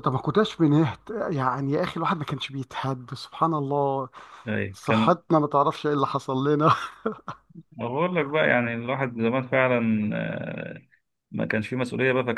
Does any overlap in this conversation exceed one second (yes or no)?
no